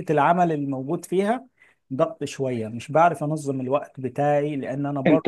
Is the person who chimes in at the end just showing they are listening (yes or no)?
no